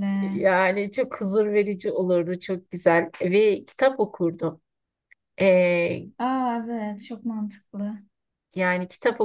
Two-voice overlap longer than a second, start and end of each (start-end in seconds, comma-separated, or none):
none